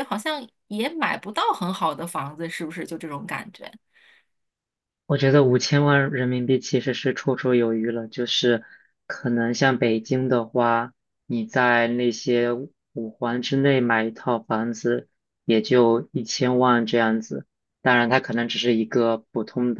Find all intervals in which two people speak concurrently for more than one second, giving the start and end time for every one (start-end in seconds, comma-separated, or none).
none